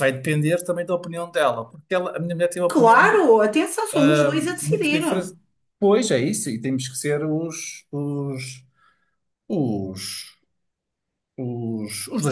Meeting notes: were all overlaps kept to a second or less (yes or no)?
yes